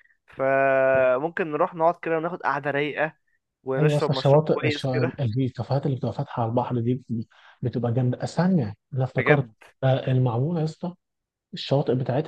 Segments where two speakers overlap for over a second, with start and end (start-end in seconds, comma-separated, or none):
3.8-5.1